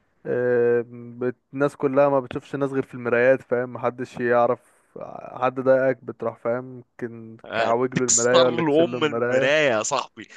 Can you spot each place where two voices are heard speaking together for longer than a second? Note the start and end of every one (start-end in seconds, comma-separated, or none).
7.5-9.5